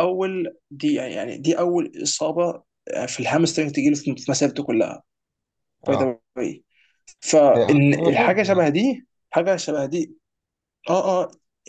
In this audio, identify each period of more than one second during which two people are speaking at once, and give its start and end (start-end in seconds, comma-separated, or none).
7.5-8.8